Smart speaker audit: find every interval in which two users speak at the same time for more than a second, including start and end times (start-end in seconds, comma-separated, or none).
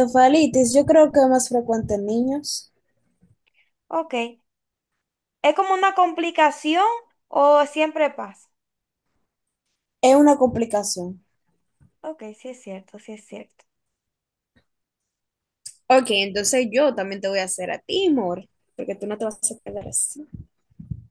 none